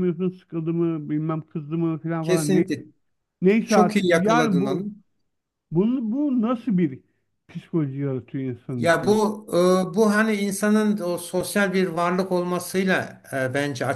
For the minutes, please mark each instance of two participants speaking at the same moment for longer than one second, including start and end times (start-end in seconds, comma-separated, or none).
3.6-4.8